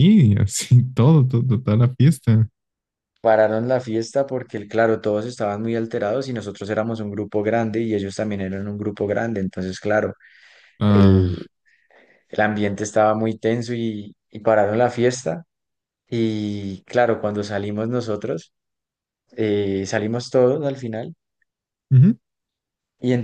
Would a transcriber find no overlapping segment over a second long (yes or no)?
yes